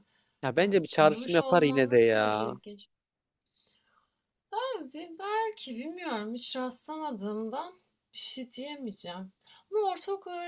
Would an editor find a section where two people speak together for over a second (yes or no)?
yes